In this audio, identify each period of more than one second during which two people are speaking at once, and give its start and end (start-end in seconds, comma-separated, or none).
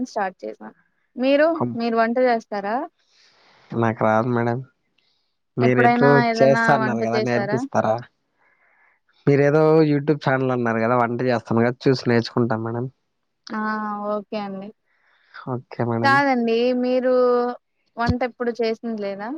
5.7-7.6